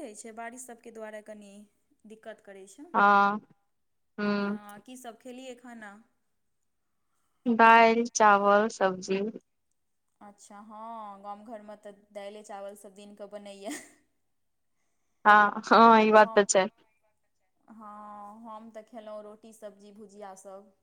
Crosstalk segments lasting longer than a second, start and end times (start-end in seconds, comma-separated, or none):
none